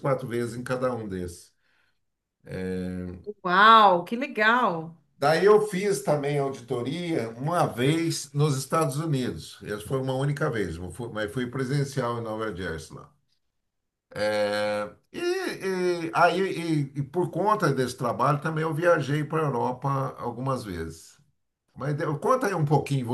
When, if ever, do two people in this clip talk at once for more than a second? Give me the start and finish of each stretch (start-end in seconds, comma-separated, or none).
none